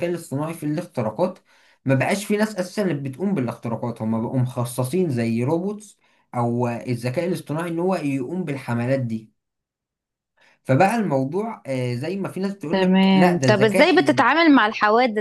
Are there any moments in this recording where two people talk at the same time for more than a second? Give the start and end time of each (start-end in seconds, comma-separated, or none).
12.7-14.3